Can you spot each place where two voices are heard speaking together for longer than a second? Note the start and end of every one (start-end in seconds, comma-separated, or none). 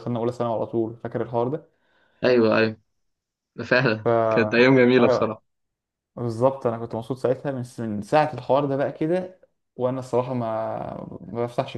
none